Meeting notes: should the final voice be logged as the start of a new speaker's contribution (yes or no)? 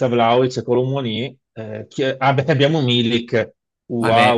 yes